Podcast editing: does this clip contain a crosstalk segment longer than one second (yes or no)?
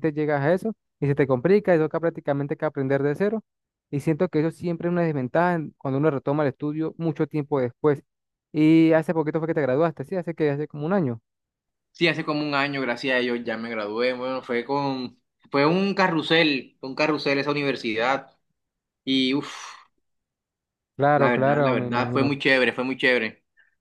yes